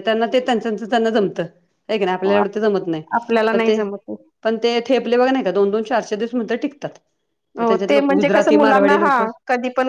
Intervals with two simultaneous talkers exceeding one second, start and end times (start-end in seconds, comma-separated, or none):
7.6-9.2